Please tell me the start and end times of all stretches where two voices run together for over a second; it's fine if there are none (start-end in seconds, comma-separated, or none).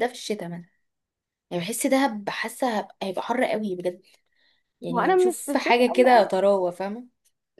4.9-6.5